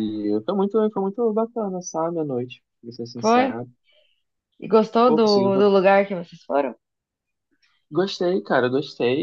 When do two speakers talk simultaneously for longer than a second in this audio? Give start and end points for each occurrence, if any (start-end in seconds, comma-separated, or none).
none